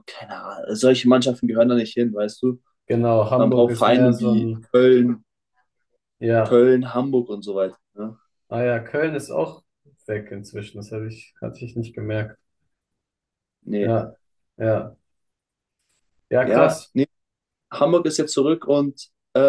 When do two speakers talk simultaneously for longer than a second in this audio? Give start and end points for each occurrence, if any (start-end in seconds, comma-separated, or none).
3.4-4.7